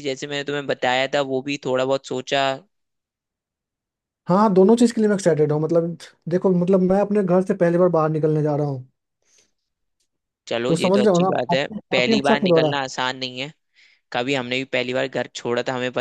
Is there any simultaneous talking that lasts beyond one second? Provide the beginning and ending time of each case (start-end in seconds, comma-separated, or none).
10.7-12.7